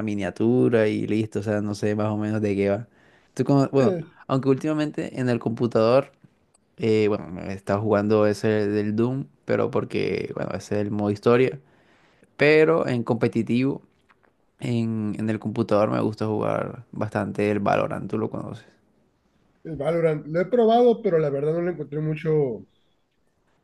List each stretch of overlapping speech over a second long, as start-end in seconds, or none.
none